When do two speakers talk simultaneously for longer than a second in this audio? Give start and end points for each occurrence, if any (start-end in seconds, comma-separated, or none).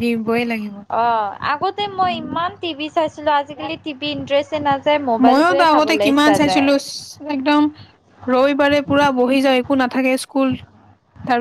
5.3-6.7